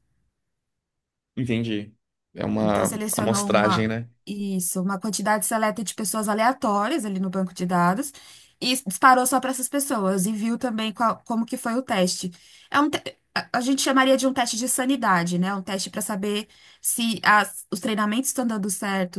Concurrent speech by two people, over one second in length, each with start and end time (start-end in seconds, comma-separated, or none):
2.6-4.1